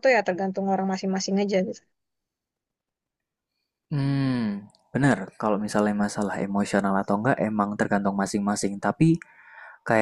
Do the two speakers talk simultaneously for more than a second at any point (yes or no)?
no